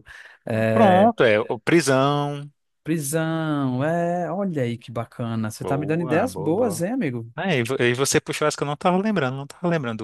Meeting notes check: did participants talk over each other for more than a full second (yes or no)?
yes